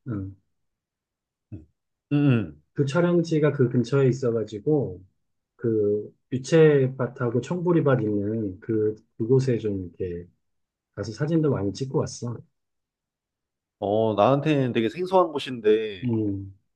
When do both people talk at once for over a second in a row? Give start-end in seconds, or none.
none